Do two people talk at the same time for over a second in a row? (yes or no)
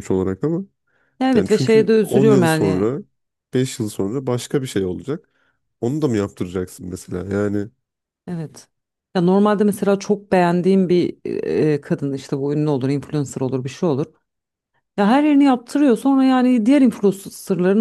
yes